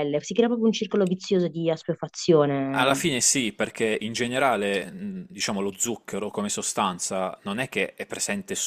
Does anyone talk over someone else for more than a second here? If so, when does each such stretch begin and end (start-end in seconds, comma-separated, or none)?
none